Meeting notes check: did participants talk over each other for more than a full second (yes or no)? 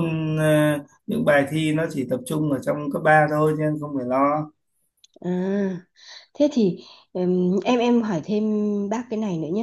no